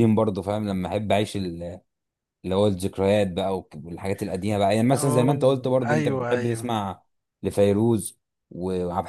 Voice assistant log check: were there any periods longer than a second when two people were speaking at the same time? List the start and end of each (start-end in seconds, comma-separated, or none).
4.9-6.7